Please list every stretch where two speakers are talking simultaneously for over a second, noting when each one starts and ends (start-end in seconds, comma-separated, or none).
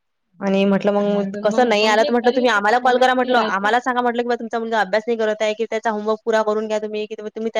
1.1-3.7